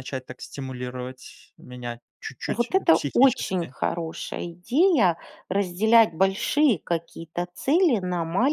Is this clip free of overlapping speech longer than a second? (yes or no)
no